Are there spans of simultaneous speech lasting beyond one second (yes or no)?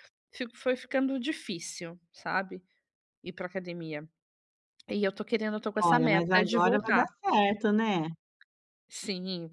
yes